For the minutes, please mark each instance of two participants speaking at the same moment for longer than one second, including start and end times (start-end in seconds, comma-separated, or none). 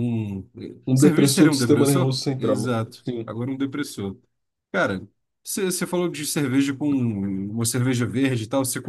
0.9-3.4